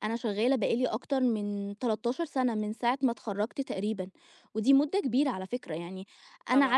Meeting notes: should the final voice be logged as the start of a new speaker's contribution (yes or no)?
no